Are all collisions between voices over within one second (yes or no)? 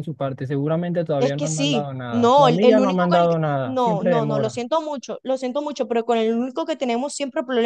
no